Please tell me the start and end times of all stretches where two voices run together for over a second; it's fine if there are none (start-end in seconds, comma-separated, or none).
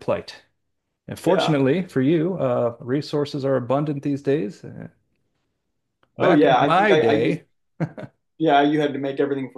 6.2-7.4